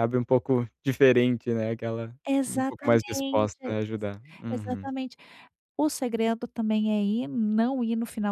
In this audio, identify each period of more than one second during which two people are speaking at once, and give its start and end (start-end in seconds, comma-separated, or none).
2.3-3.8